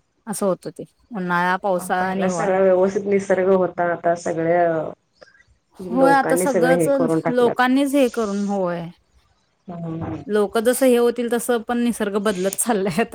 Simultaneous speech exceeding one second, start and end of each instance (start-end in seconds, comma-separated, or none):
6.0-7.6